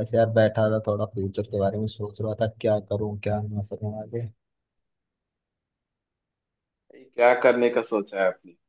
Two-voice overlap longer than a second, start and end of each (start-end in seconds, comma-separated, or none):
none